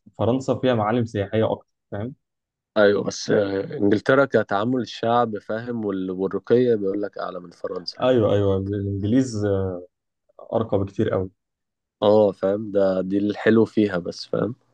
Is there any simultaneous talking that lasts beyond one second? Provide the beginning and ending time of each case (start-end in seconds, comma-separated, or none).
none